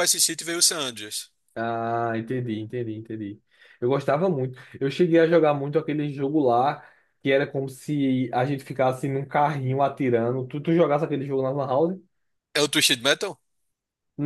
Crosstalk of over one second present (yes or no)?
no